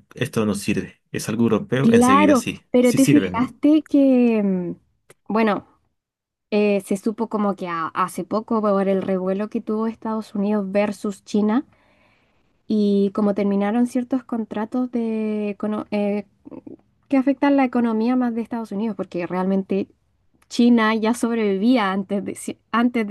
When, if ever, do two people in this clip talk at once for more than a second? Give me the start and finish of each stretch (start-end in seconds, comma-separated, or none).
1.8-3.5